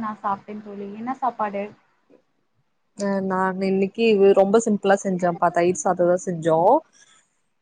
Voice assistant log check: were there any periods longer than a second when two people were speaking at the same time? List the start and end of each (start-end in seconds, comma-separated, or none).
none